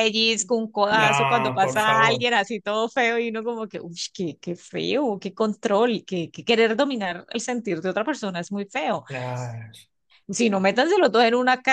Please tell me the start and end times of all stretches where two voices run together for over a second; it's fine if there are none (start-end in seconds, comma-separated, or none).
0.9-2.3